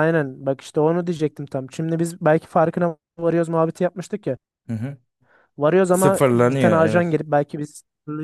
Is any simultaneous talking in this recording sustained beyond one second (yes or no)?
yes